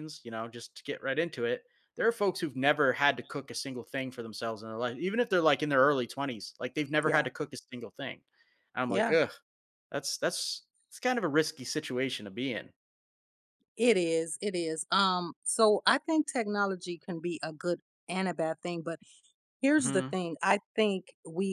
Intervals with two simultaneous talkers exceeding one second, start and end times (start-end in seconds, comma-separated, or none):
none